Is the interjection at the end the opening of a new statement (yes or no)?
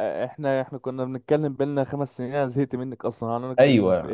yes